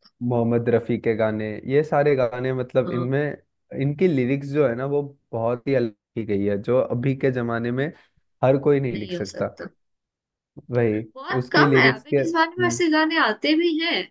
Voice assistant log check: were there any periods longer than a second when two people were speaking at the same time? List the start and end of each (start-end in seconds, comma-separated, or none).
11.4-12.8